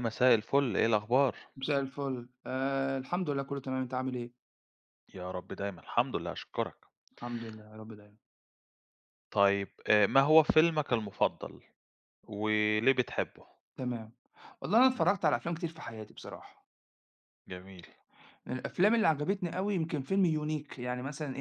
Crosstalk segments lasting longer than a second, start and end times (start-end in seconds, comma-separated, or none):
none